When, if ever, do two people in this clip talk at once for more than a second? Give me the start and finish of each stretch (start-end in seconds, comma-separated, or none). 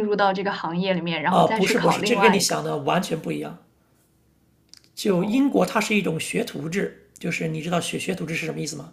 1.3-2.6